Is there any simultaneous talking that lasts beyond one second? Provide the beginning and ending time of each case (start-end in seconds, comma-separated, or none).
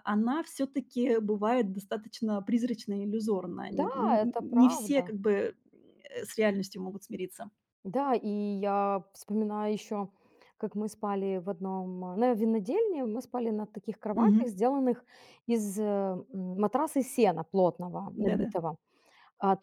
3.7-5.1